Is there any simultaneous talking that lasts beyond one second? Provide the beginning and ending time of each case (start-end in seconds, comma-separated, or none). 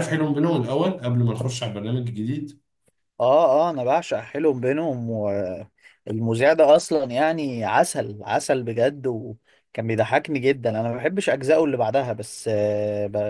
none